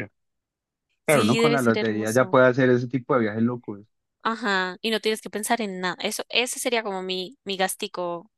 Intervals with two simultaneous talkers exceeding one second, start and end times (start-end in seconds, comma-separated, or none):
1.1-2.4